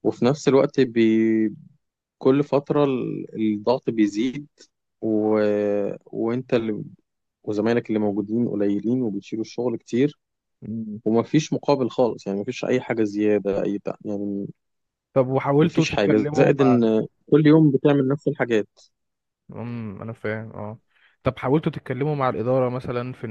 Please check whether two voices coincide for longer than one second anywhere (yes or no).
yes